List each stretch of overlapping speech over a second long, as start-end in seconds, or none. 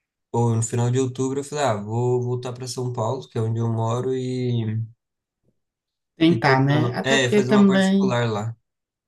6.3-8.2